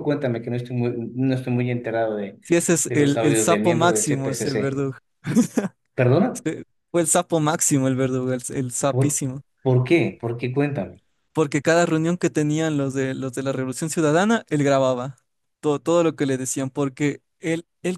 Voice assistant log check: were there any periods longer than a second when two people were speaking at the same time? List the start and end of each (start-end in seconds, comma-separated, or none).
2.8-4.8